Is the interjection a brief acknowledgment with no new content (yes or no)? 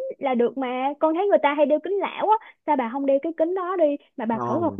no